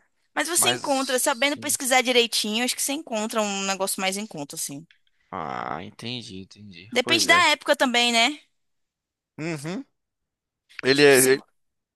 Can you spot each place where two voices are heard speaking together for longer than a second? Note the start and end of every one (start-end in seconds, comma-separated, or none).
0.6-1.8